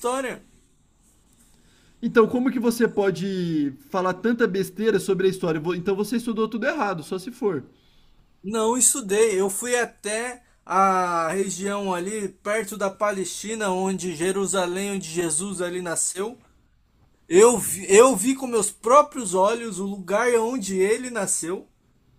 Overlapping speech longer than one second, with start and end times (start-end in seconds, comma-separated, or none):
none